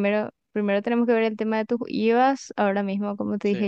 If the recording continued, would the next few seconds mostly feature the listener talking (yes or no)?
no